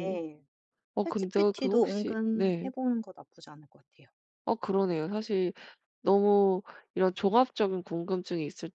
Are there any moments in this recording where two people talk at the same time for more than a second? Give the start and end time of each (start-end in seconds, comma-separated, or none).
1.0-2.7